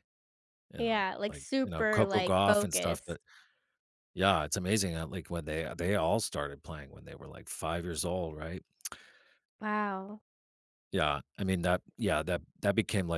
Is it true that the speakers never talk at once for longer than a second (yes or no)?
no